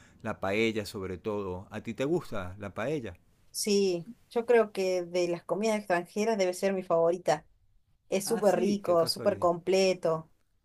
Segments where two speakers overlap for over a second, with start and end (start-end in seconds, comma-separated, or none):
8.2-9.5